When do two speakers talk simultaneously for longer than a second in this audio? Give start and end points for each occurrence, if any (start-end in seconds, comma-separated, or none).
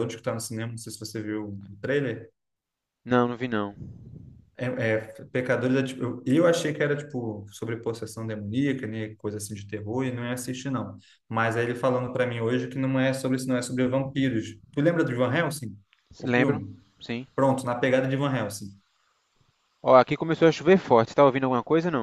none